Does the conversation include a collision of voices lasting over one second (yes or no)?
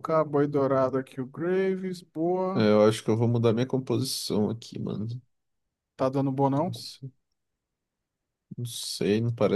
no